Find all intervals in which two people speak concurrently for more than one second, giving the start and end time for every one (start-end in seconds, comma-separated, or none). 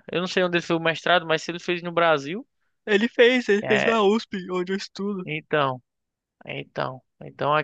none